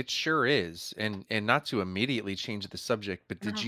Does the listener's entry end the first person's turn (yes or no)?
no